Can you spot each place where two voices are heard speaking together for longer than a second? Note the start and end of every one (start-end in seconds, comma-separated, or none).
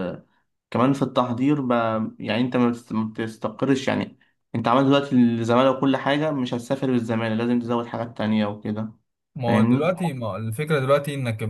none